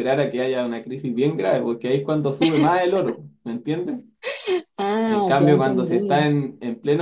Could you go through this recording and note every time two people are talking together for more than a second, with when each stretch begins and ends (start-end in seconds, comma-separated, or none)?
5.0-6.3